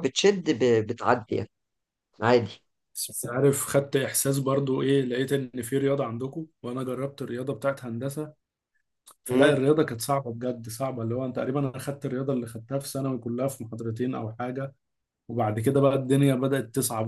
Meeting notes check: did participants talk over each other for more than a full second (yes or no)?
no